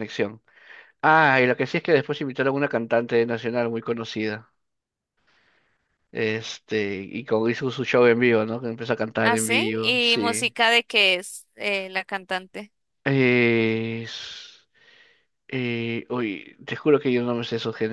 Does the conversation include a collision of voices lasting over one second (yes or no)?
yes